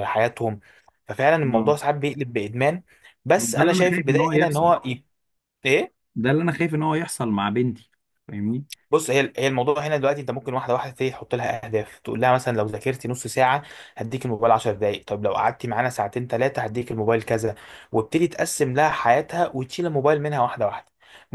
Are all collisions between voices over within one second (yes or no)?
no